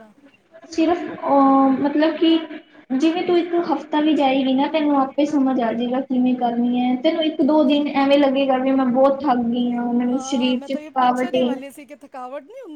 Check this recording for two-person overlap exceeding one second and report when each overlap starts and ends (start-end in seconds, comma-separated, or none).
10.1-11.5